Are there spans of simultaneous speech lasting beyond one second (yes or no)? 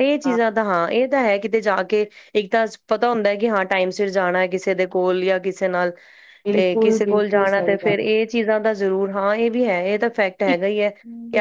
yes